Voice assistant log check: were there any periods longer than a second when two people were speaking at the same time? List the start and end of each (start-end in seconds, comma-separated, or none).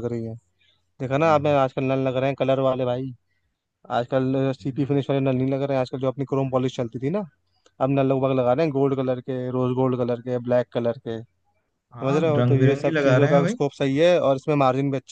12.0-13.5